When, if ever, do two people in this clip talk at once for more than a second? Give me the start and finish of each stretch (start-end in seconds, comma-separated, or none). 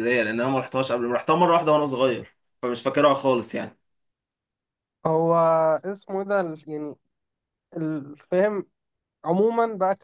none